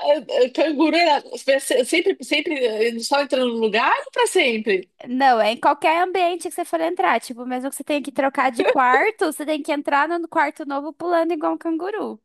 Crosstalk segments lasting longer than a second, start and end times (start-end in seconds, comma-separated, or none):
none